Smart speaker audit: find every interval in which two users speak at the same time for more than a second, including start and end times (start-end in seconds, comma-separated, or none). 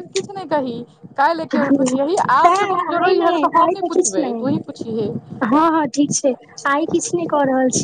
1.5-4.4